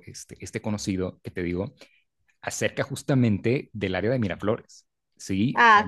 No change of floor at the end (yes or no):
yes